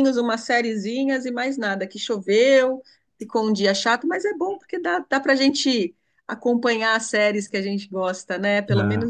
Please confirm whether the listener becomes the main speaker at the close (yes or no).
yes